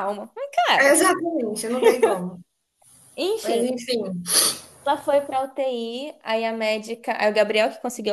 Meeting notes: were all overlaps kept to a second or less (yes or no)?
yes